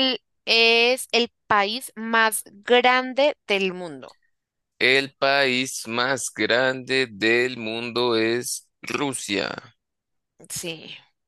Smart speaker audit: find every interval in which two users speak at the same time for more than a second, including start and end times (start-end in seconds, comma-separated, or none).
none